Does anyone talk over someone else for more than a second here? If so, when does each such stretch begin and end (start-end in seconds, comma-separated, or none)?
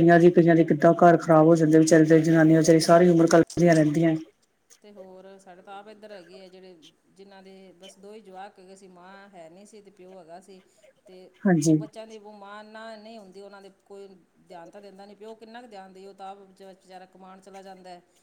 none